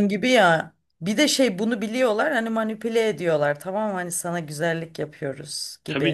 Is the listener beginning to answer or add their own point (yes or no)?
yes